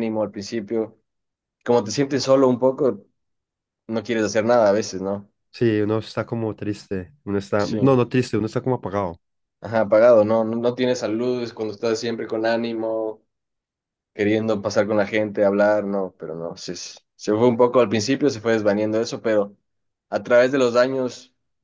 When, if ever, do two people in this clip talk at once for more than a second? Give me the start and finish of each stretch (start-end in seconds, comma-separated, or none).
none